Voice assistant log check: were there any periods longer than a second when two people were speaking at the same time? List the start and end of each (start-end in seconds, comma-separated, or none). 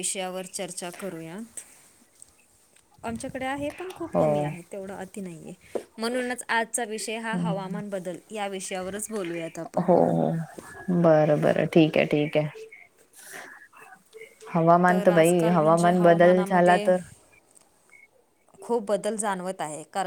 15.2-16.9